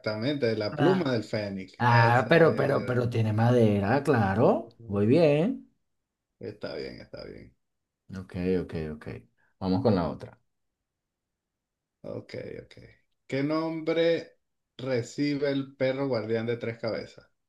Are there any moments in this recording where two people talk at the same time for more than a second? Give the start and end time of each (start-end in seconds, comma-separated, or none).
1.8-3.0